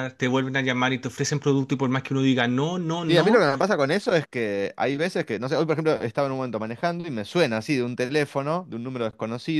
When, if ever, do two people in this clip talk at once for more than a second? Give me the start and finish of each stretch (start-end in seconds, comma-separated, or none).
none